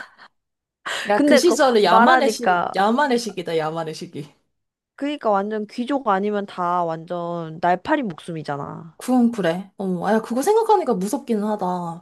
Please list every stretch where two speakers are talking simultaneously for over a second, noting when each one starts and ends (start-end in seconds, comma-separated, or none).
1.1-2.7